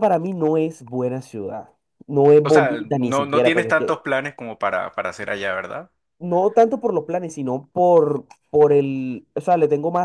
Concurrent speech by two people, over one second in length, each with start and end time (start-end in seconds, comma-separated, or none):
2.4-4.0